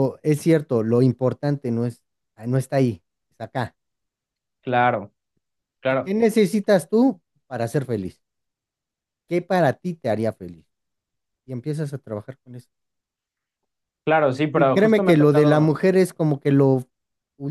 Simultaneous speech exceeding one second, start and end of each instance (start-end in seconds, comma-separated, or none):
14.5-15.8